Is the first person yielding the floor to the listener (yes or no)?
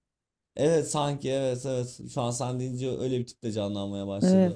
yes